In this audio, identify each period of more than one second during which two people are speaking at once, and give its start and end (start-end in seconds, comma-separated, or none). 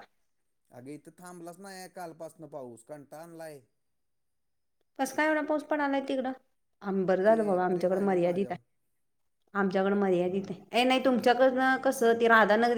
7.3-8.6